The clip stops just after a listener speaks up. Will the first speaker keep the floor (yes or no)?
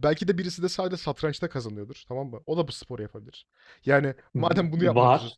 yes